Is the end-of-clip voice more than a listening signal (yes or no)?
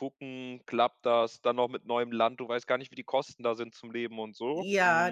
yes